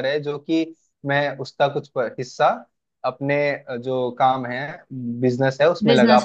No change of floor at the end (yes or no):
yes